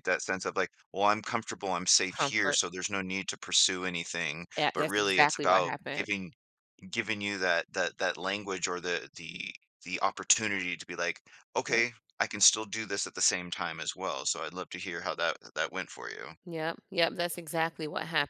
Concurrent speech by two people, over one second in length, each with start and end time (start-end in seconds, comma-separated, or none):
4.6-6.1